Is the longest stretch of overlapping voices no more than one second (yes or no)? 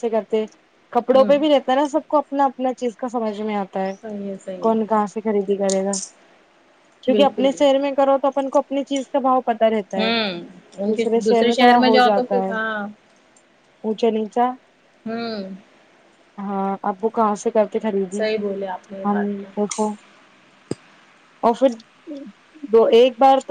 yes